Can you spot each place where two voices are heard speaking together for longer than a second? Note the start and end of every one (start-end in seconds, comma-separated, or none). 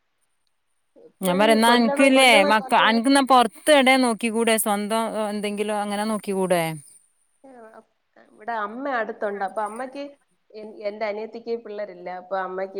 1.2-3.0